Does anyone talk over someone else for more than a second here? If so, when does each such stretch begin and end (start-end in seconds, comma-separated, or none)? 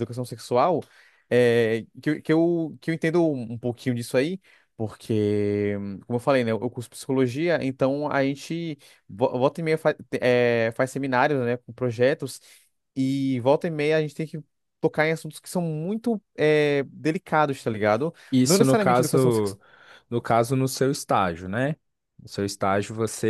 18.3-19.6